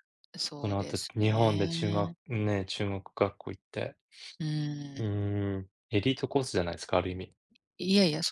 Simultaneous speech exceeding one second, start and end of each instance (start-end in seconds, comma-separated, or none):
0.6-2.1